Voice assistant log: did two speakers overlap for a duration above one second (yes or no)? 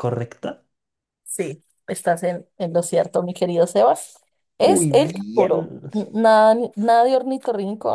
yes